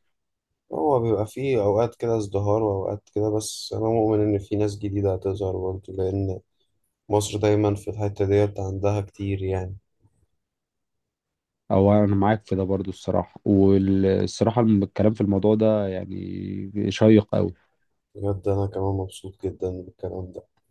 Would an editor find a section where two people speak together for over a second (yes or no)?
no